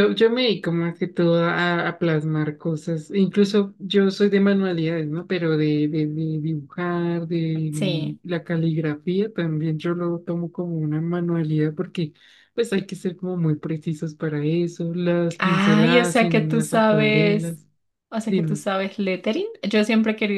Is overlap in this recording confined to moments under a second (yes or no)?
no